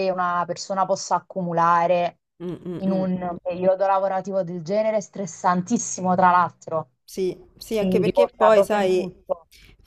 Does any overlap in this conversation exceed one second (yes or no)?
yes